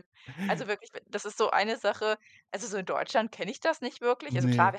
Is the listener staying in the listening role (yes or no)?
yes